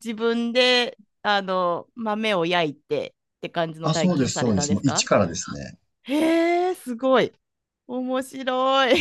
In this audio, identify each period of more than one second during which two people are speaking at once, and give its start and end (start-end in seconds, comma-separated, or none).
3.8-5.1